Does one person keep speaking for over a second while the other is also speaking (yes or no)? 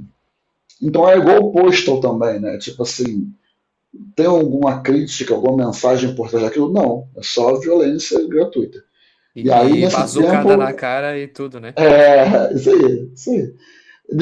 yes